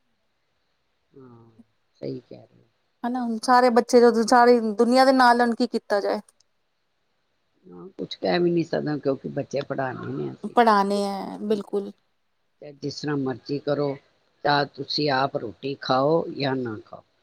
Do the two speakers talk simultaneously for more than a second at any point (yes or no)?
yes